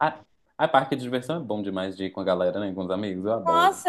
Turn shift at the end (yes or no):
yes